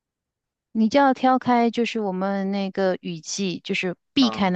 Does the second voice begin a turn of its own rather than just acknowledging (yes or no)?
no